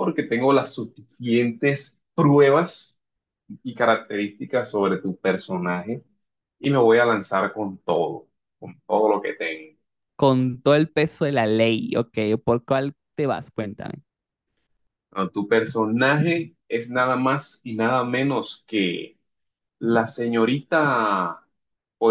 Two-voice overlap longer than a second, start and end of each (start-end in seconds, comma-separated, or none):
none